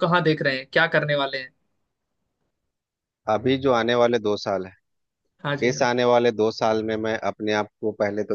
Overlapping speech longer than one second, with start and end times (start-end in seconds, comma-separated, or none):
none